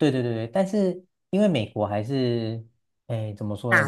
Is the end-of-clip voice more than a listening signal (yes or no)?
no